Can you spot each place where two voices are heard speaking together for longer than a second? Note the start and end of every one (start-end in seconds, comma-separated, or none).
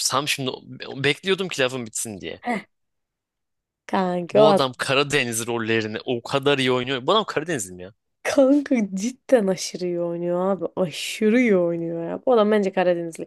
none